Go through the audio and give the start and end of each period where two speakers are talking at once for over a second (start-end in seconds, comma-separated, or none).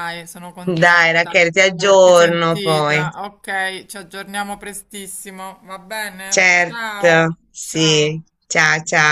0.8-3.0, 6.3-8.2